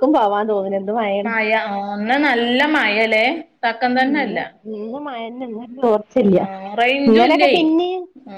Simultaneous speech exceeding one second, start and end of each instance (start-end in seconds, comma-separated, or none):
none